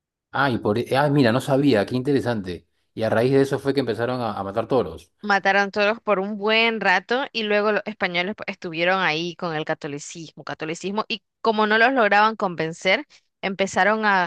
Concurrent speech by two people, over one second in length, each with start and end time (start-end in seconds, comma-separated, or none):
none